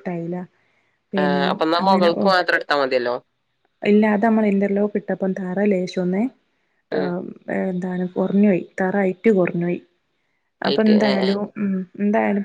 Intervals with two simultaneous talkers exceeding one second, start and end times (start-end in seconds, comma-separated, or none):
none